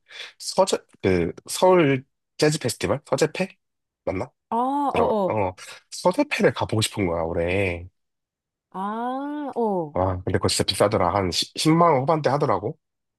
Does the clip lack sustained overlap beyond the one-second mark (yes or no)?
yes